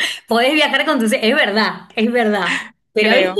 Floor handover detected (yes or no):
no